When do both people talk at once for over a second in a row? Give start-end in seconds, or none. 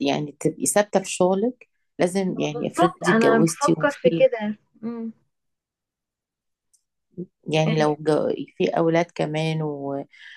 2.3-4.2